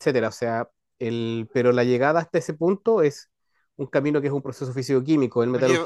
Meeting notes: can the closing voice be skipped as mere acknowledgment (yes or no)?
yes